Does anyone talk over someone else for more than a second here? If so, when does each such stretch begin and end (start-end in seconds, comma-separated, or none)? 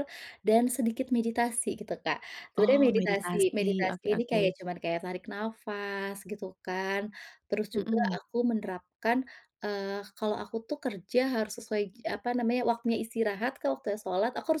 2.6-4.5